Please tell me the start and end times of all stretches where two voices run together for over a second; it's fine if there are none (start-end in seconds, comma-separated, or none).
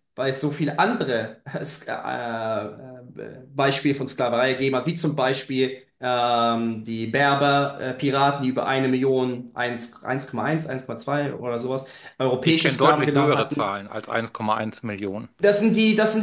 12.4-13.8